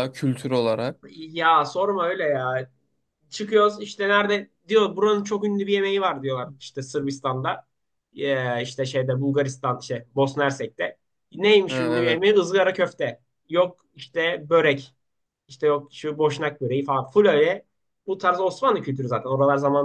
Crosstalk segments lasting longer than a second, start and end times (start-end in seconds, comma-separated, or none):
none